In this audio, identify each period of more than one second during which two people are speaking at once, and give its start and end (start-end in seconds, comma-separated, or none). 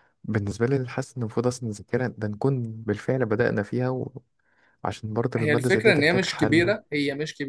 5.4-6.7